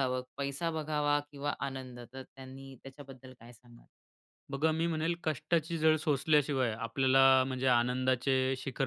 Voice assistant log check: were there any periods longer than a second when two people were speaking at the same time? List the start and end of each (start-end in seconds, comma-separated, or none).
none